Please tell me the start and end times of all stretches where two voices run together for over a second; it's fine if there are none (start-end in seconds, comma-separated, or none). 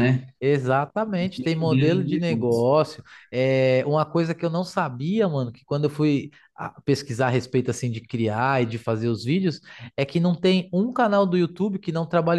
1.2-2.7